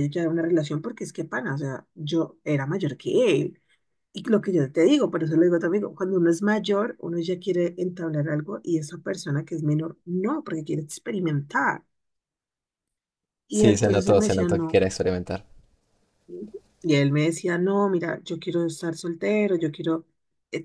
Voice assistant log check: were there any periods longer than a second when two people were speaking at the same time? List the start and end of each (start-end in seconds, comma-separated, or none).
13.5-14.8